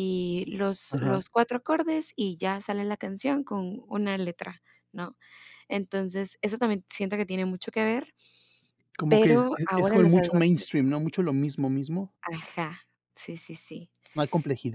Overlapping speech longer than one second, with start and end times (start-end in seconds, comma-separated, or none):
9.1-10.7